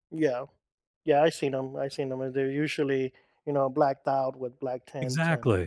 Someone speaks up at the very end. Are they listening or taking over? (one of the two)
taking over